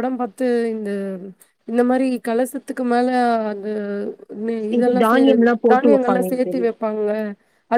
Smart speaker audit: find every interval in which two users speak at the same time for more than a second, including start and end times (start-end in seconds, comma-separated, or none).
4.8-6.7